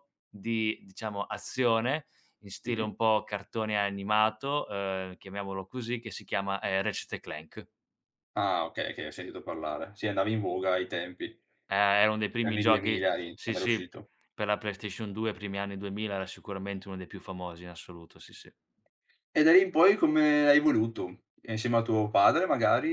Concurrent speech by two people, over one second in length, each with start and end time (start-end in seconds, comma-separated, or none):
12.4-13.9